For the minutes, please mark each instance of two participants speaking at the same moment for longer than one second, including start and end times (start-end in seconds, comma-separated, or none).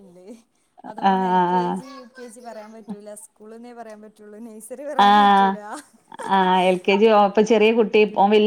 none